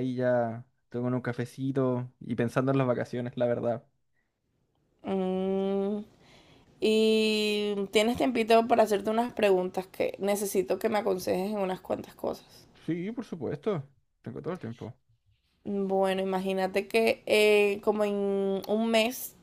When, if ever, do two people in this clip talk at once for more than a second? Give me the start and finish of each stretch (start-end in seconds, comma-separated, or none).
none